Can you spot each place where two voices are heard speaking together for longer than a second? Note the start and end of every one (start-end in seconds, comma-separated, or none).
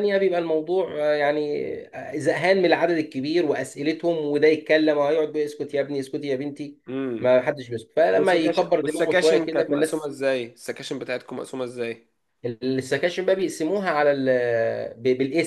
8.1-10.1